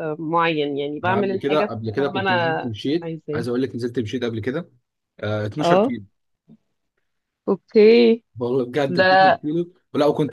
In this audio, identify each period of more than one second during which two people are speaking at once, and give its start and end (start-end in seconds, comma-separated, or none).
1.0-3.4